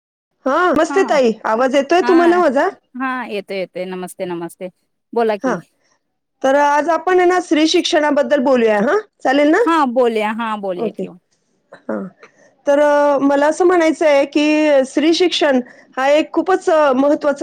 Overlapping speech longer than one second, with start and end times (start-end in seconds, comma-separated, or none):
none